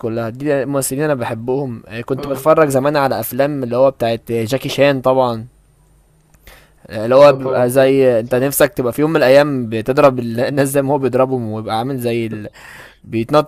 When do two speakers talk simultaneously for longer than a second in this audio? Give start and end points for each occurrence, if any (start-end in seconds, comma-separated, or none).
7.2-8.5